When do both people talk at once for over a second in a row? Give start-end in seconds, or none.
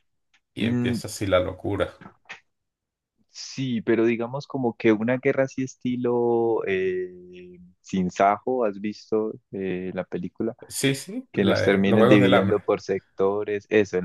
11.3-12.6